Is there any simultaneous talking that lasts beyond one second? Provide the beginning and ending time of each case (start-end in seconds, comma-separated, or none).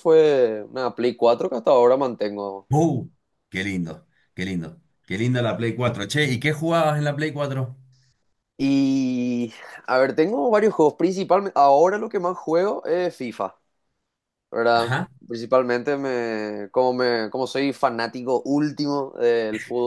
none